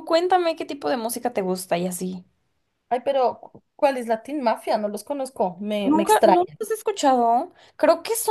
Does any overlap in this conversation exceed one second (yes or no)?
no